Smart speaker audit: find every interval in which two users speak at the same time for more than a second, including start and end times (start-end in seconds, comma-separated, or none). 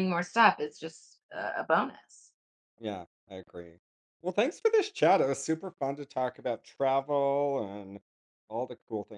none